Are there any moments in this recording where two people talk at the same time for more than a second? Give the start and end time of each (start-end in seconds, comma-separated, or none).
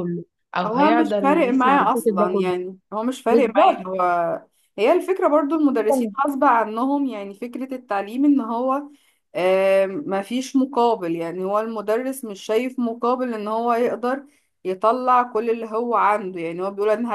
0.7-2.5